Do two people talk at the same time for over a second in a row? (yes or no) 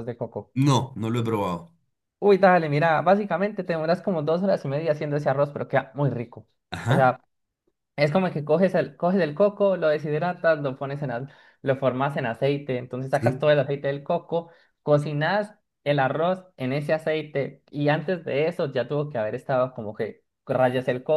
no